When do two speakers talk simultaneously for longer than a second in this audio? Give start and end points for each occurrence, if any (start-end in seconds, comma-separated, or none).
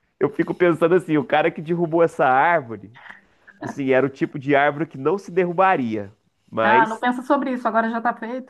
none